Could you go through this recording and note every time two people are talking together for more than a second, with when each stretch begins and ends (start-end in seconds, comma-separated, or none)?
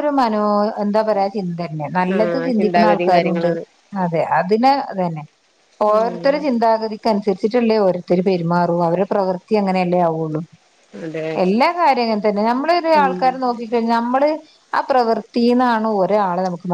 2.1-3.5